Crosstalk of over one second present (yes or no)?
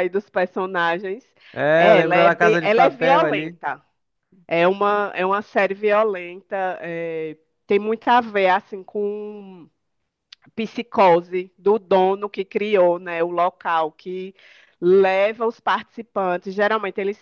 yes